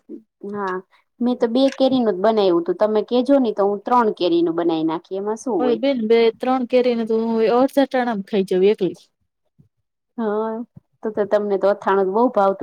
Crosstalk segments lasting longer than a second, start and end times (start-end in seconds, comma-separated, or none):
none